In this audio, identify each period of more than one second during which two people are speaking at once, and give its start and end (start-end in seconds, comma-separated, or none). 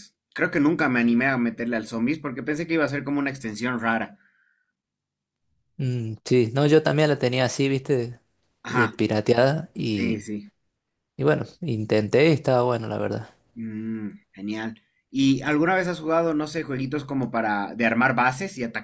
none